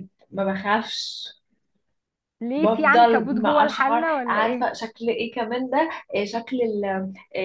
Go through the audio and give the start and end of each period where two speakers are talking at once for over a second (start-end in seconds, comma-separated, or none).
2.6-4.7